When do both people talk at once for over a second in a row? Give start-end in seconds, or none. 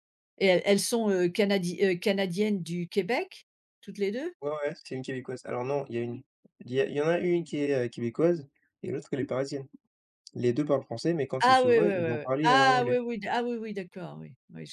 11.4-13.0